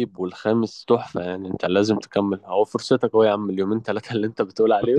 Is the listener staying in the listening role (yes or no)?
no